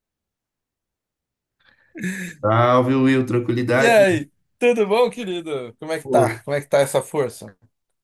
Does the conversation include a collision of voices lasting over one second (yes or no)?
no